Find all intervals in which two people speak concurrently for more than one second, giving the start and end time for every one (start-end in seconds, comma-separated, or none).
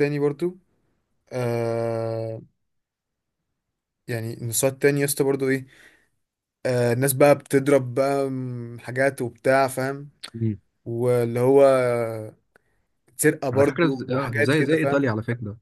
13.5-15.1